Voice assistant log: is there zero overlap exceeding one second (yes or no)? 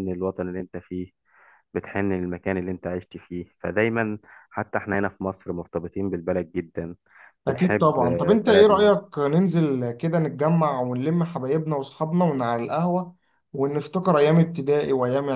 no